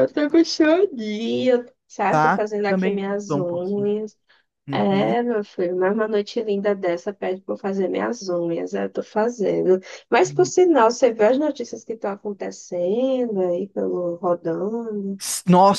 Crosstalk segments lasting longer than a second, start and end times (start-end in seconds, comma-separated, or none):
2.1-3.9